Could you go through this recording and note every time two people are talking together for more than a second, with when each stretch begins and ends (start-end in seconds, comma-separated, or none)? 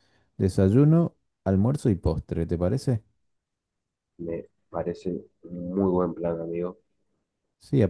none